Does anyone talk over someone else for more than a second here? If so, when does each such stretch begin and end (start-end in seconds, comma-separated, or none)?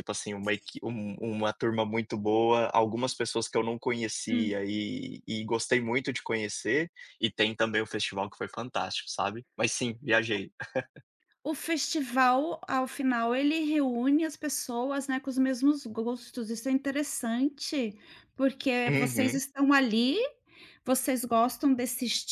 none